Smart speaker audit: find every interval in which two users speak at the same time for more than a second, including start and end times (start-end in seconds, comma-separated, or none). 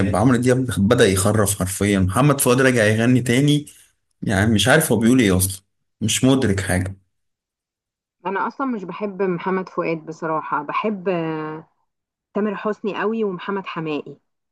none